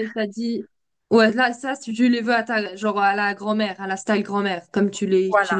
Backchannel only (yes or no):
no